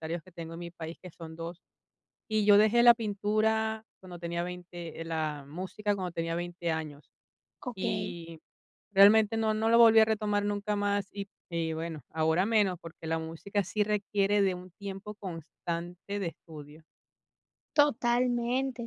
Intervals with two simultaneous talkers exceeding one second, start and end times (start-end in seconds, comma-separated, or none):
none